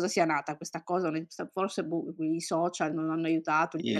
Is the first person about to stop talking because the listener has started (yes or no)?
yes